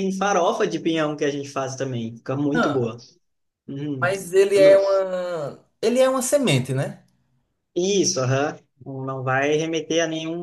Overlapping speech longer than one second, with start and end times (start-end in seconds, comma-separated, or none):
none